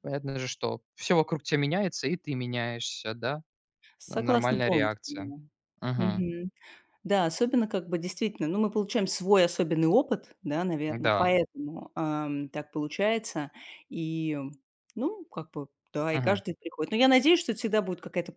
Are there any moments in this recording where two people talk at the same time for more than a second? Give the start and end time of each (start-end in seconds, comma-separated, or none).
4.1-5.3